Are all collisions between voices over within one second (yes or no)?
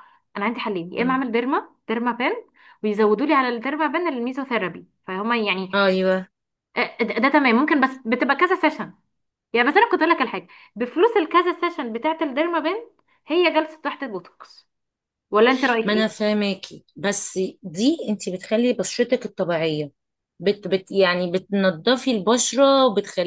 yes